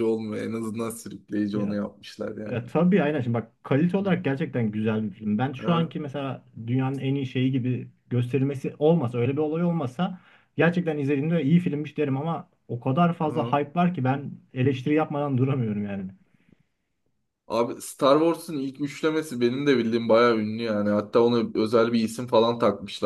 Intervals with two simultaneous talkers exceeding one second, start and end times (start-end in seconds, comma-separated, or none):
none